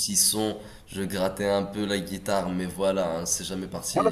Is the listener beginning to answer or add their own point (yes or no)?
yes